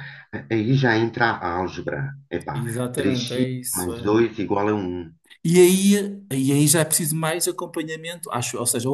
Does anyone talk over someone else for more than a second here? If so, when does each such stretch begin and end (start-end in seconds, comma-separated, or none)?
2.5-4.2